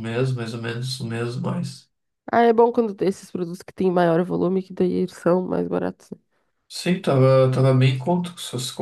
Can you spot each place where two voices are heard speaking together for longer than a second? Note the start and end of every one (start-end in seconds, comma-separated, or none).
none